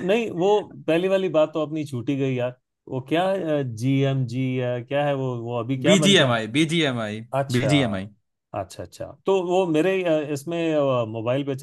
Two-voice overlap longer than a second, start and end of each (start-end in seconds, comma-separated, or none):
none